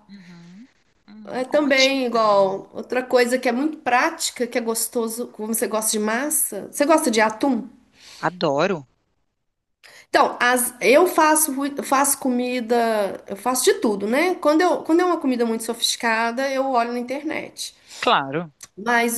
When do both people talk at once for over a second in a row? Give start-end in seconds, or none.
1.2-2.7